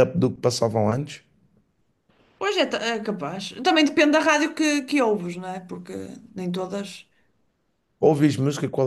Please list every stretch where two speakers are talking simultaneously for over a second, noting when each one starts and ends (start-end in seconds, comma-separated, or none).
none